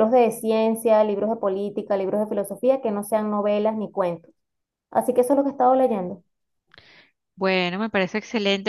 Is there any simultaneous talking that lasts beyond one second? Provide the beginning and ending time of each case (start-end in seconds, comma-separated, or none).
none